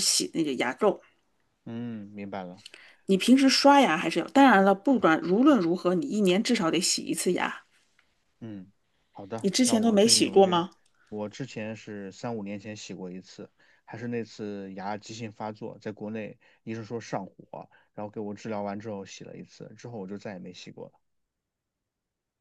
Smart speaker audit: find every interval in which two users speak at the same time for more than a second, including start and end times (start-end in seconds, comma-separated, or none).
9.4-10.6